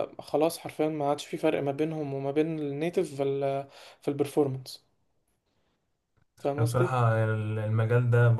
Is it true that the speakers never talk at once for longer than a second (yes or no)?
yes